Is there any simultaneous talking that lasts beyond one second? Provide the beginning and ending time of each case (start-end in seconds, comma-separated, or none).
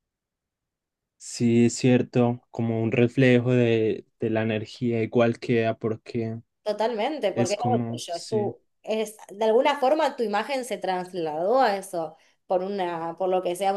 7.3-8.6